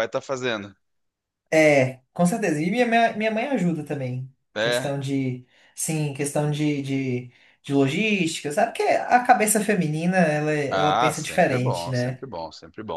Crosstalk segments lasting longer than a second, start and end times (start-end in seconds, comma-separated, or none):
10.7-12.2